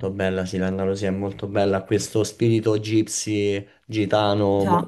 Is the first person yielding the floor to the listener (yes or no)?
no